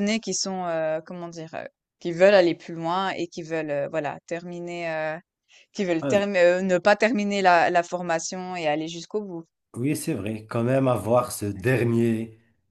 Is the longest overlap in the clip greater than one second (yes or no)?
no